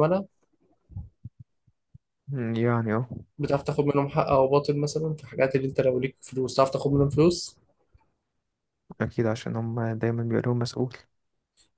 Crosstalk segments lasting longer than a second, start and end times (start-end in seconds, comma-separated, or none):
none